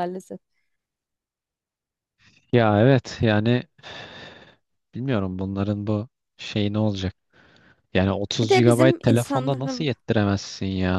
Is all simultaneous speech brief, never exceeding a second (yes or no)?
no